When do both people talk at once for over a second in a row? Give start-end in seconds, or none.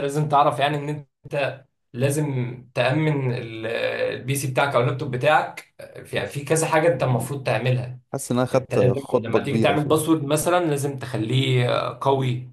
8.5-9.9